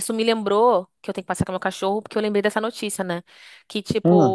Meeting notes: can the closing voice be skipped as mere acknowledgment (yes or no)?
yes